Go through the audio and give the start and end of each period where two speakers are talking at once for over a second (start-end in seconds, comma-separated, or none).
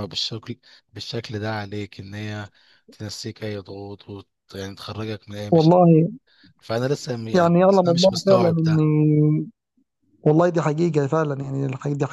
7.3-8.8